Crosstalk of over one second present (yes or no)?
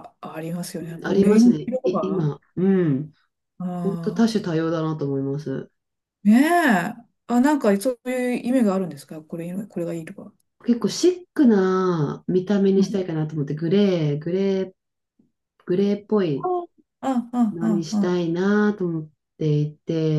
yes